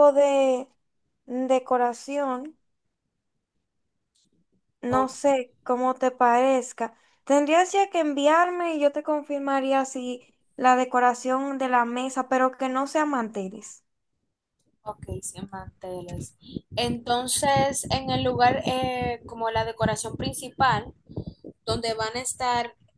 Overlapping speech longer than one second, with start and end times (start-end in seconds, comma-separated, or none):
none